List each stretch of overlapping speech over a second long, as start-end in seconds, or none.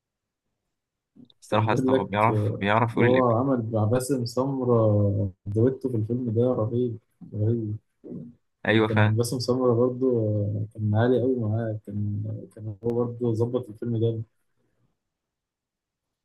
1.5-3.2